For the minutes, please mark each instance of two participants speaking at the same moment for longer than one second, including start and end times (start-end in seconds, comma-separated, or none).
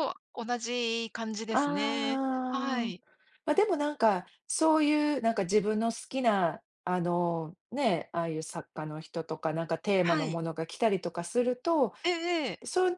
1.5-3.0